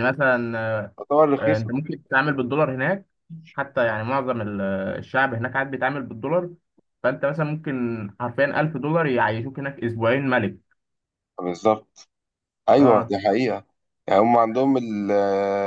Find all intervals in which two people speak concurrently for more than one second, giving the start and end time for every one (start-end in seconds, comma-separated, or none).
none